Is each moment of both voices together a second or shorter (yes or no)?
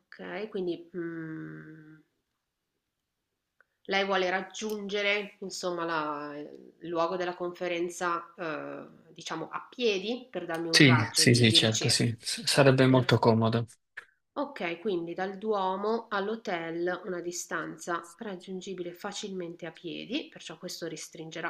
no